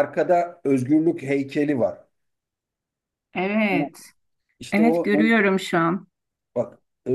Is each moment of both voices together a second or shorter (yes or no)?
yes